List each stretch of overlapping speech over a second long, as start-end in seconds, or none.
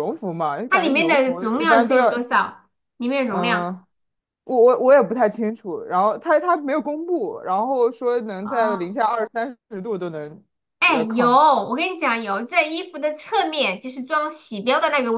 0.7-2.3